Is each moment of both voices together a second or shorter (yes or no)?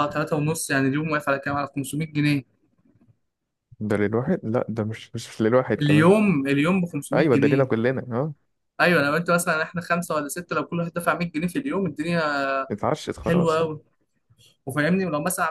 yes